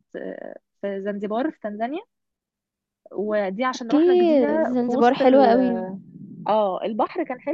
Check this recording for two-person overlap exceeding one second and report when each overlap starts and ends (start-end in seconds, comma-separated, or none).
3.7-5.5